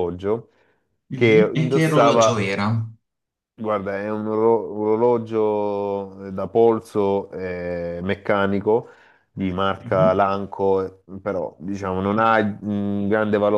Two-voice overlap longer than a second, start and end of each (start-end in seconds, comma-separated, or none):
1.1-2.5